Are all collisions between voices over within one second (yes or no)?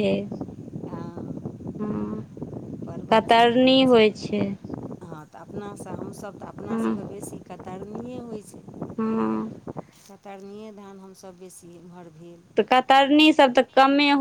yes